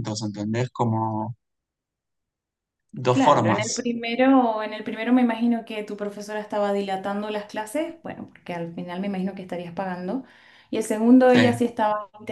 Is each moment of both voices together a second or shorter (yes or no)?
yes